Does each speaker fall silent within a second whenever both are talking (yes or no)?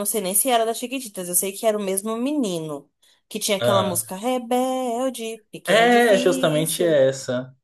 no